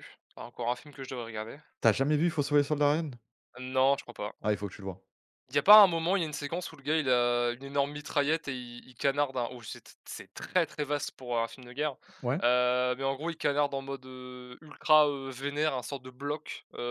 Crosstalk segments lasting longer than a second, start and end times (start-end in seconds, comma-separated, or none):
none